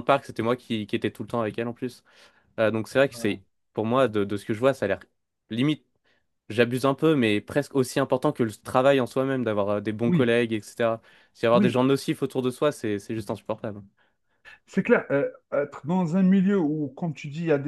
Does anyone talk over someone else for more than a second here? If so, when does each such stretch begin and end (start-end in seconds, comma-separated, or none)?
none